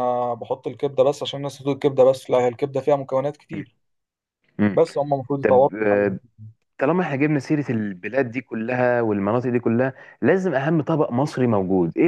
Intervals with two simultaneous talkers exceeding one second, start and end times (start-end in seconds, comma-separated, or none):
none